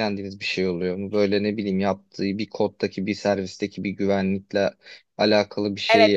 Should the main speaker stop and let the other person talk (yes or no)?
yes